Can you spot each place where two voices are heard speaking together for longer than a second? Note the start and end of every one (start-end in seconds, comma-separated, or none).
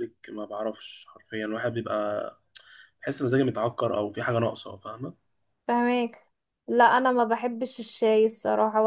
none